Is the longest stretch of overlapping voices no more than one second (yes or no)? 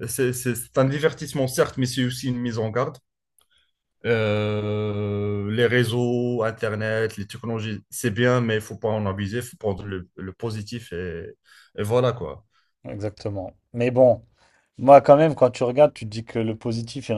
yes